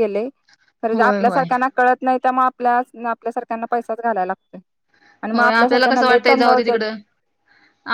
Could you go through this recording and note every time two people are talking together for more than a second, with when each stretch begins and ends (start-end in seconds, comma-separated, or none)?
5.3-6.8